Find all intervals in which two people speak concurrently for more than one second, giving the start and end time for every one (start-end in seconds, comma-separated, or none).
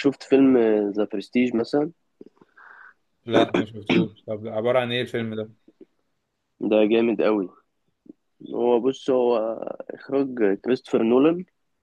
none